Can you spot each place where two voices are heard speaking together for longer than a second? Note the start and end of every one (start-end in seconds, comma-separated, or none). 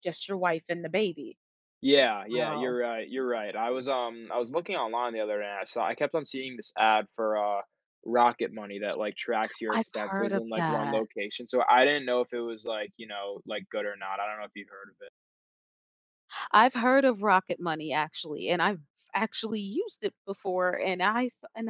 9.7-11.1